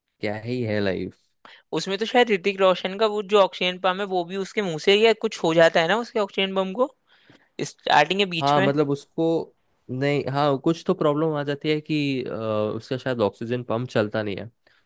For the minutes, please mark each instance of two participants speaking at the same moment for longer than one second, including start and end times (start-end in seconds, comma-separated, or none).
none